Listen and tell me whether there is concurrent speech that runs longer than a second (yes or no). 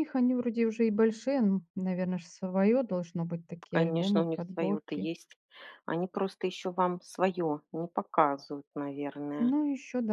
yes